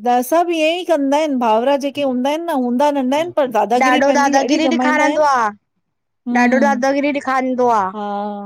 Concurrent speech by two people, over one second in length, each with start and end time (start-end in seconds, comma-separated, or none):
3.8-5.2